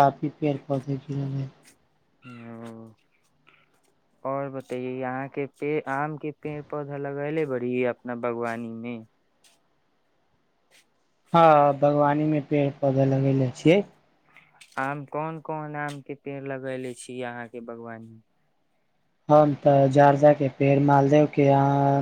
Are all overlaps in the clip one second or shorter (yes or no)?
yes